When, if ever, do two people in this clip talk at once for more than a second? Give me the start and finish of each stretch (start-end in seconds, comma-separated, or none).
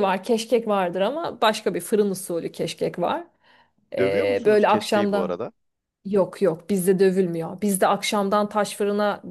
4.0-5.4